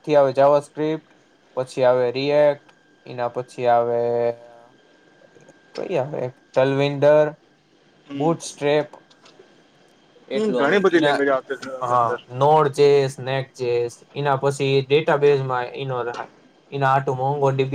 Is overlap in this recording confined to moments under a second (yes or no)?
no